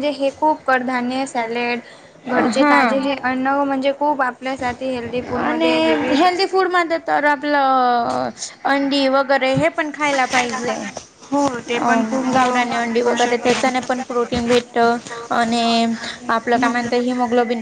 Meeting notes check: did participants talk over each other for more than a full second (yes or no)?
no